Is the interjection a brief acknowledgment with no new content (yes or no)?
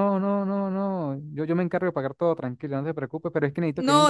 no